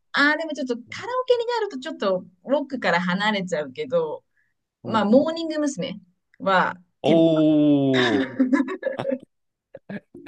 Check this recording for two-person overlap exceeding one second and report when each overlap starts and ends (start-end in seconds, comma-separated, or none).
none